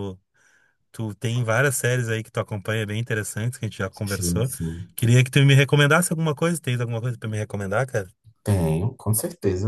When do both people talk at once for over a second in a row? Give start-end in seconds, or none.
none